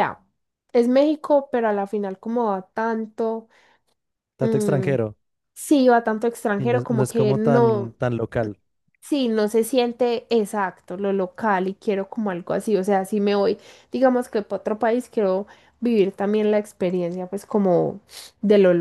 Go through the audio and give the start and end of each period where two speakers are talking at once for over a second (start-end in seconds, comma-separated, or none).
6.6-7.9